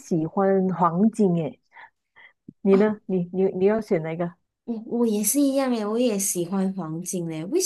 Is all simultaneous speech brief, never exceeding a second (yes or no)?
yes